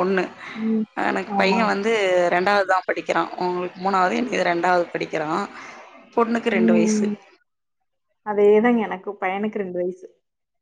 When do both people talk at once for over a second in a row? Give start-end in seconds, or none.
none